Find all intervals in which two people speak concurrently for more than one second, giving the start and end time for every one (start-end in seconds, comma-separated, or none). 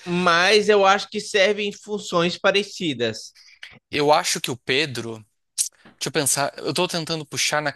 none